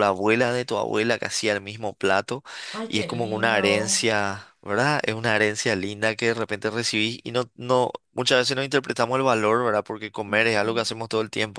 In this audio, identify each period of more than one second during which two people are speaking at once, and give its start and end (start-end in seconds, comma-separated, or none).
2.9-4.1